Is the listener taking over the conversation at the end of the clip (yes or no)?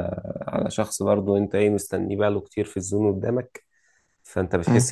no